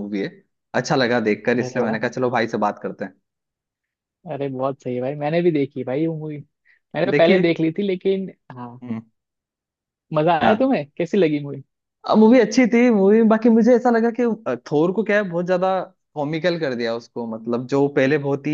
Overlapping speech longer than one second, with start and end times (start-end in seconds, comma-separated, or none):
none